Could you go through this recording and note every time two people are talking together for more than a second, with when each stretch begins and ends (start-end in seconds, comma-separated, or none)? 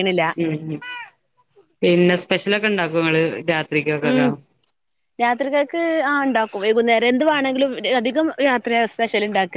none